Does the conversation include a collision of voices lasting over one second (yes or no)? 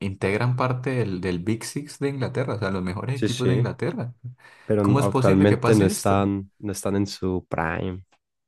yes